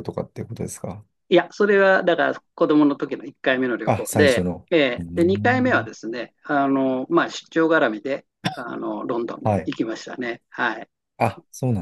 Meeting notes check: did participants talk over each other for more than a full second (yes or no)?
yes